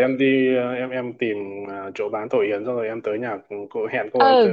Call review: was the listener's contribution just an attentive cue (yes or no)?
no